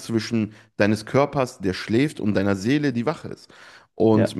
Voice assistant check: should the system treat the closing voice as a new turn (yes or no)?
no